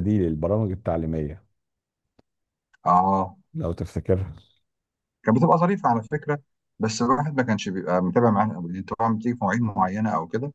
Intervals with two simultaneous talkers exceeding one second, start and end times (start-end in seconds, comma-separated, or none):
none